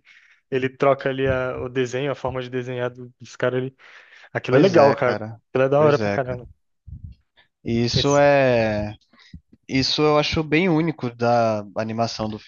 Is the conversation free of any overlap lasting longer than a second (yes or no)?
no